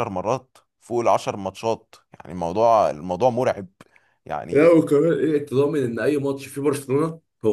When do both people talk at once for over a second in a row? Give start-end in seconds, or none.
none